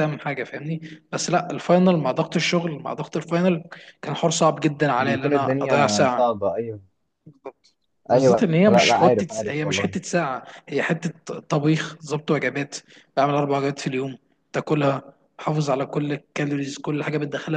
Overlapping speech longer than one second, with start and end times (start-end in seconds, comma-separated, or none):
5.0-6.3, 8.1-9.9